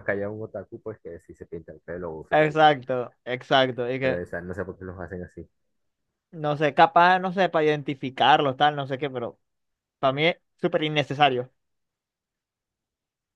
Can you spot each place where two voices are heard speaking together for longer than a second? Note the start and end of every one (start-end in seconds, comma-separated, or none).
none